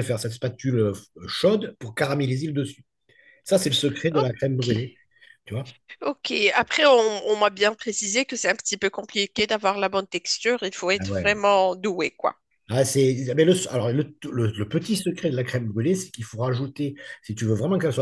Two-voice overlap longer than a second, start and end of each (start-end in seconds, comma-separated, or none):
none